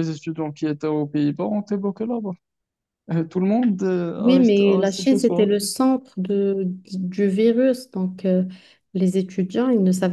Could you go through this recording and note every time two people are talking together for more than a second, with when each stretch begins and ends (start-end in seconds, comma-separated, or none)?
4.2-5.5